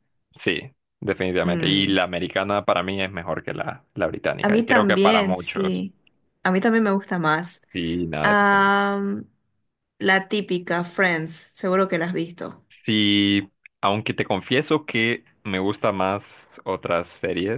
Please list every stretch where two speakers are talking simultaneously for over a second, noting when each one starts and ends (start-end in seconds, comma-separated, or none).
4.4-5.8